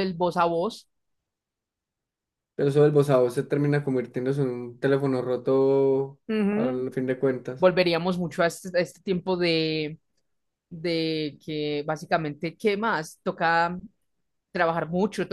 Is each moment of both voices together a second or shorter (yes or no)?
yes